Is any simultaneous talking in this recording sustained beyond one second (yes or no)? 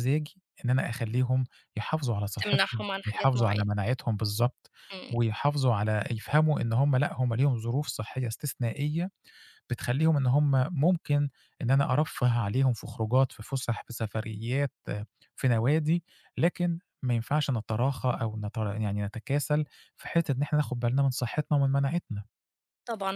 yes